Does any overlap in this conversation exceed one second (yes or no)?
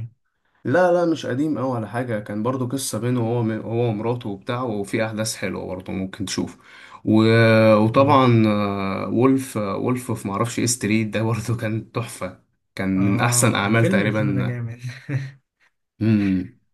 yes